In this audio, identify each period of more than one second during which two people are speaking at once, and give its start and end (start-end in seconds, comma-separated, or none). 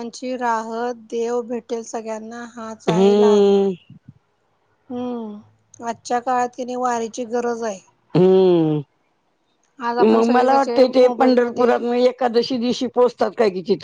10.0-11.7